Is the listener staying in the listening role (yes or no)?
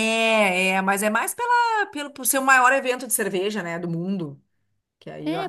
no